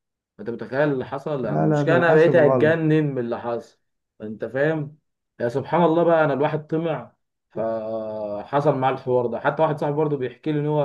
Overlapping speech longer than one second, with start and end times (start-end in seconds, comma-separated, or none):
1.4-2.9